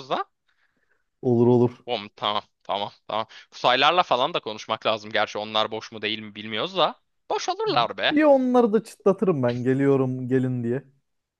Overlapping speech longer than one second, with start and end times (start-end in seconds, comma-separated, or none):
none